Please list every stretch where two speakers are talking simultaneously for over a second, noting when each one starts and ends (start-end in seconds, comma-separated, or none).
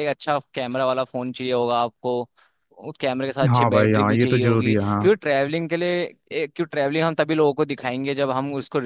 3.5-5.1